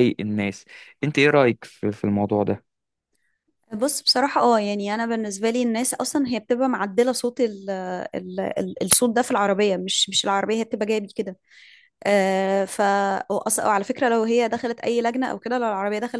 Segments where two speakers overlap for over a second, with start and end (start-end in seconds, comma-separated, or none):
none